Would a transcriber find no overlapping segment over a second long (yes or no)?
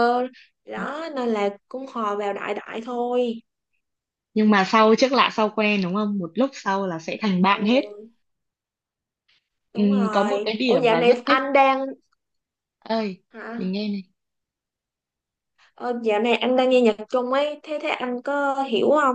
no